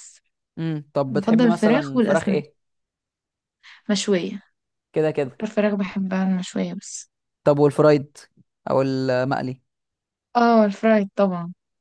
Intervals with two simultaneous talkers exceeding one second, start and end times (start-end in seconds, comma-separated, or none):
1.1-2.4